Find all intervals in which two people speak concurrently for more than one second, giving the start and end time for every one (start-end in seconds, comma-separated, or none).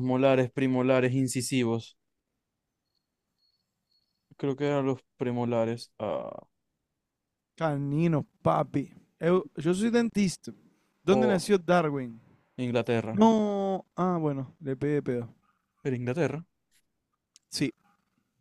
none